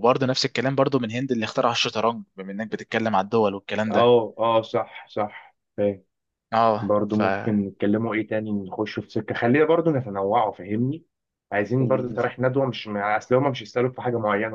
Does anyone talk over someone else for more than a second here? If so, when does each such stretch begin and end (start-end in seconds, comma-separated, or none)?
none